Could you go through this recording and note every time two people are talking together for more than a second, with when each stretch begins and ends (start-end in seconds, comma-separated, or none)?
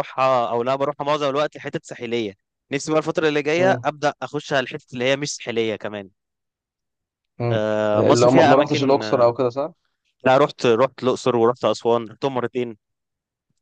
7.5-9.3